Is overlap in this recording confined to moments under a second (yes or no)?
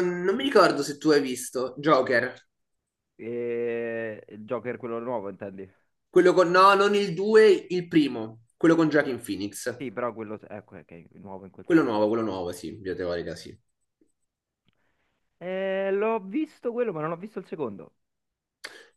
yes